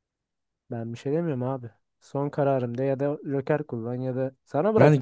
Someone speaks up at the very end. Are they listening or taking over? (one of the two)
taking over